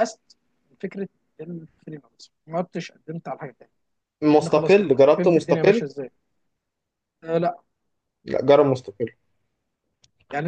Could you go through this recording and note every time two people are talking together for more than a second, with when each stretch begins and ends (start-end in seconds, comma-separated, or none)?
4.3-5.8